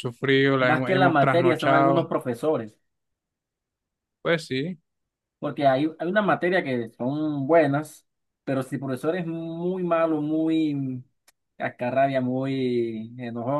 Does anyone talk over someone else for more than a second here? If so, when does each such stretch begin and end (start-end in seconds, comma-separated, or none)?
0.6-2.1